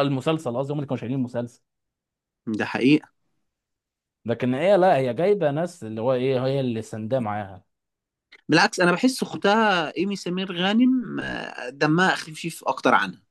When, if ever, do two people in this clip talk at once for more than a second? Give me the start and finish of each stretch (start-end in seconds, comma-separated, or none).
none